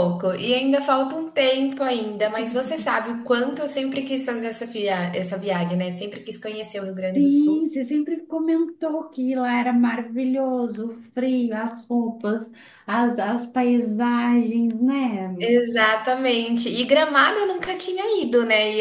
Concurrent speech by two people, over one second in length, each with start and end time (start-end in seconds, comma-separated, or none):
none